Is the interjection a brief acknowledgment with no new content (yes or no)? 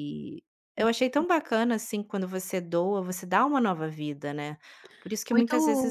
no